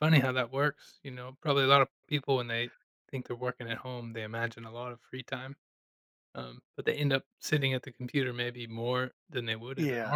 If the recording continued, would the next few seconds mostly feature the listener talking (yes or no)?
yes